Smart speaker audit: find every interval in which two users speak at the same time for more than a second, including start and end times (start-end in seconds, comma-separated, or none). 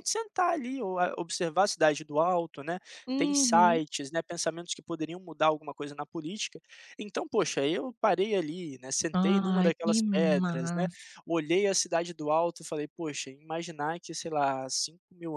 9.2-10.9